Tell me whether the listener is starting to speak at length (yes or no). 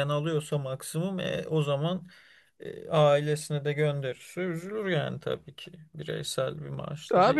yes